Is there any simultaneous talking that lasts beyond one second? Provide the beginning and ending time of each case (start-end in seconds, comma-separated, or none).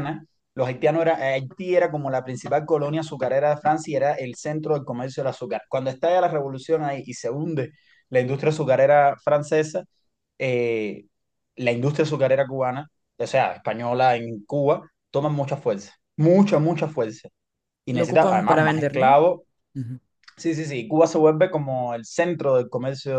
17.9-19.2